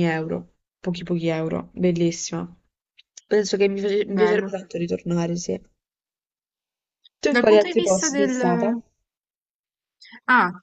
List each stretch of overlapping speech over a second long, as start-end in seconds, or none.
7.3-8.8